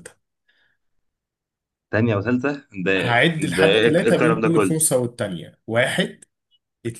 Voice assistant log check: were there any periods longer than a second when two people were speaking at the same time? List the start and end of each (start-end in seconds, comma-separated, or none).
3.5-4.8